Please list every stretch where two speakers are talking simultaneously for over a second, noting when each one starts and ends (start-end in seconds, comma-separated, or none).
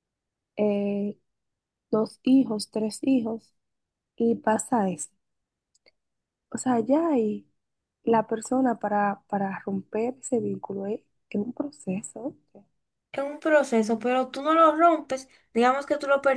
none